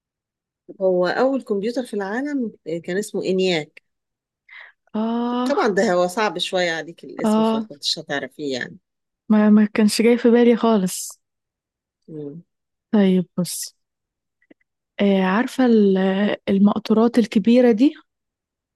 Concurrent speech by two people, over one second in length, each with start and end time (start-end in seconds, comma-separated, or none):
none